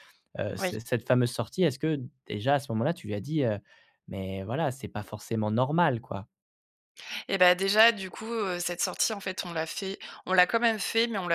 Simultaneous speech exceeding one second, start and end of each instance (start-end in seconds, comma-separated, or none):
none